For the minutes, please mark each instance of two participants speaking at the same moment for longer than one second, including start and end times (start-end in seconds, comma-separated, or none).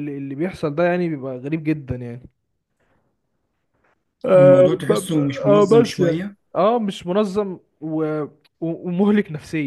4.3-6.3